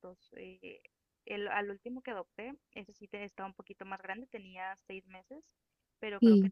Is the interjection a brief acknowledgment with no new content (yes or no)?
yes